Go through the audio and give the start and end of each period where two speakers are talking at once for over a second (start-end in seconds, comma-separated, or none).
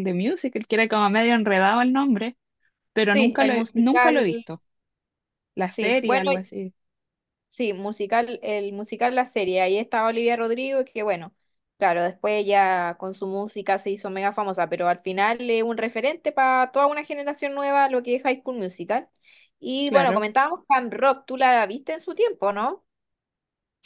3.0-4.3